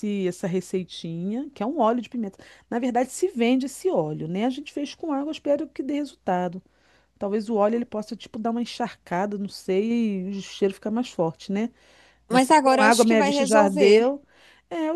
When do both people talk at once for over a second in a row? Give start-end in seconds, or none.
12.3-14.0